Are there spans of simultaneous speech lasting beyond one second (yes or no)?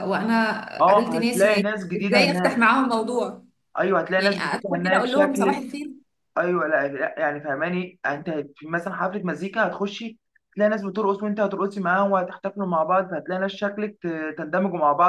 yes